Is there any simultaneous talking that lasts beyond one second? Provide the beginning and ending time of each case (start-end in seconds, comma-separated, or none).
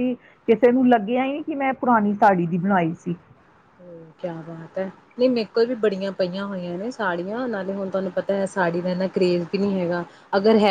none